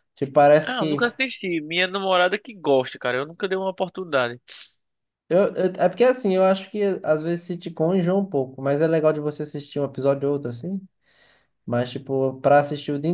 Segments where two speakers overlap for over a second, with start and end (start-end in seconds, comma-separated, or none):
none